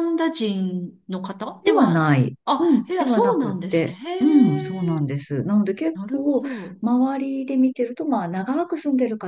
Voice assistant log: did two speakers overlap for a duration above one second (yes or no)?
yes